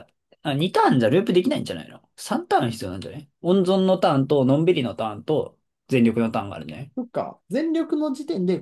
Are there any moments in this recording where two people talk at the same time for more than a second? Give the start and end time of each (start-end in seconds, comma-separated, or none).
none